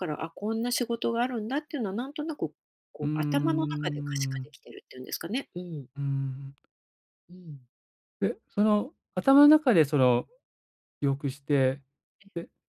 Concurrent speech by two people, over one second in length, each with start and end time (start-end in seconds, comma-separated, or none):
3.0-4.5